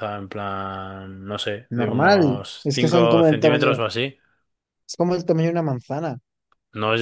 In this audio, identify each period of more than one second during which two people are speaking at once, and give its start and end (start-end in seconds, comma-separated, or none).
1.8-3.8